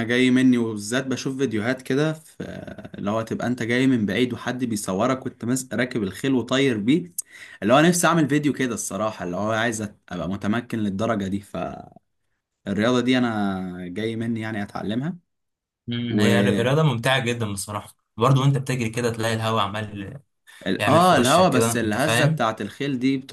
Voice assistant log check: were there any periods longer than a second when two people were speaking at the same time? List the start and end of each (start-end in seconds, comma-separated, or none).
20.8-22.4